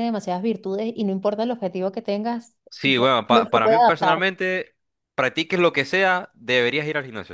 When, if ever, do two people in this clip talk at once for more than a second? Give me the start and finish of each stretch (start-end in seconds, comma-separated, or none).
2.7-4.3